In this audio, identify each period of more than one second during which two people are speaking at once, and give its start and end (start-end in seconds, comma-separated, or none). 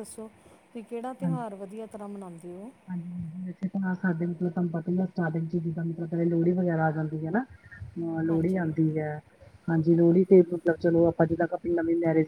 none